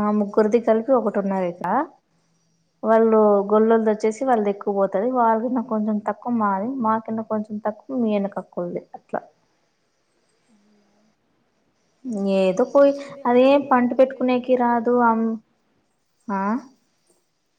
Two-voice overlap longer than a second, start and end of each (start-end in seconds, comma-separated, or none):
13.3-15.0